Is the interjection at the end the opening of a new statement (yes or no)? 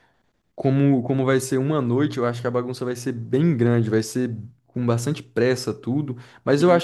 no